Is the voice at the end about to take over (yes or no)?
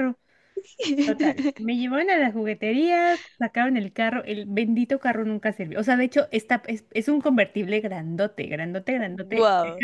no